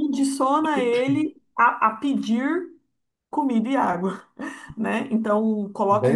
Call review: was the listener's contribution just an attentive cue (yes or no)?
no